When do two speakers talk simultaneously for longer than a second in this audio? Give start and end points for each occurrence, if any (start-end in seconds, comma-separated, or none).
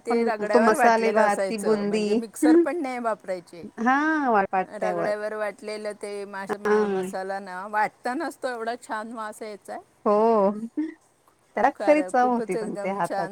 0.5-2.0